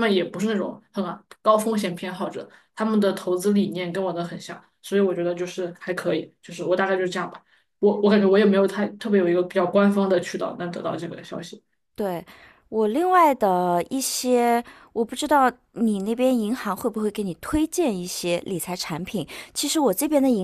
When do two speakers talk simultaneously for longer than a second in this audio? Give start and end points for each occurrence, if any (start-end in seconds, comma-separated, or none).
none